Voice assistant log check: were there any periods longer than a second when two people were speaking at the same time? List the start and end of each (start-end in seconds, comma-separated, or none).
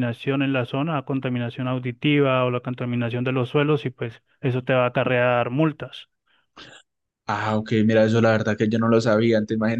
none